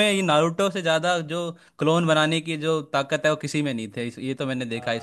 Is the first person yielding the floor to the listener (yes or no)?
yes